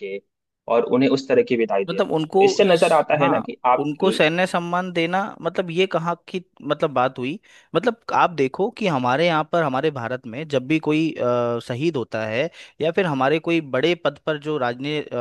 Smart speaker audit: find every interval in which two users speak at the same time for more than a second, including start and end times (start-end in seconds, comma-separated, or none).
1.9-4.1